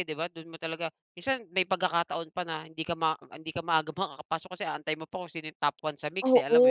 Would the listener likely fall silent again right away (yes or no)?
no